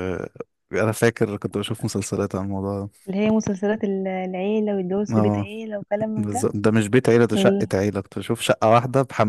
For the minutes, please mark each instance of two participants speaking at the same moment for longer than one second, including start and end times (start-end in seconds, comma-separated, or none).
none